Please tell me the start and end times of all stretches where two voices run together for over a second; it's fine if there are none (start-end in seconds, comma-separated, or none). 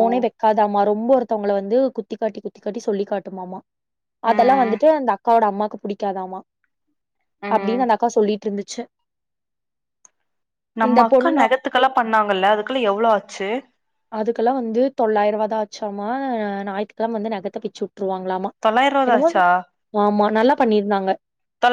none